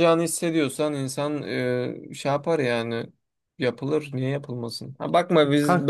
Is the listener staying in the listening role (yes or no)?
yes